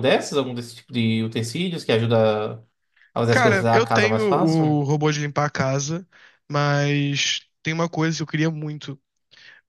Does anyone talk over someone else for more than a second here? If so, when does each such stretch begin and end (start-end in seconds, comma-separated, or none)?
3.3-4.8